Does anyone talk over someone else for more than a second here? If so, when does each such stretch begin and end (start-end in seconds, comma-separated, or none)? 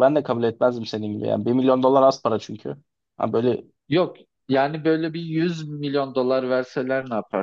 none